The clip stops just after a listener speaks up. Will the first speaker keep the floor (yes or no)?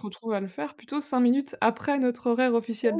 no